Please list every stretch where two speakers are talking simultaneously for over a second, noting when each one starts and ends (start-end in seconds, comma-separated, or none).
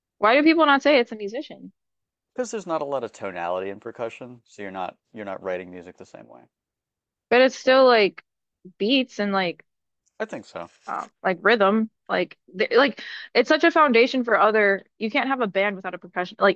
none